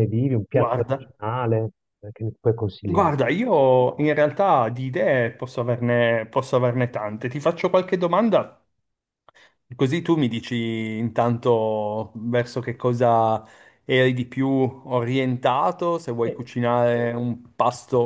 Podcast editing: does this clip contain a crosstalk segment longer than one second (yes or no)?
no